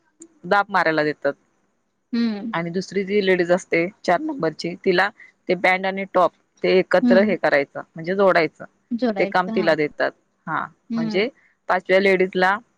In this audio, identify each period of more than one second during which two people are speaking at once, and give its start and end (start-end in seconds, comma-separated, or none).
none